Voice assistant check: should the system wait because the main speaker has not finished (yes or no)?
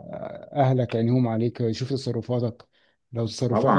no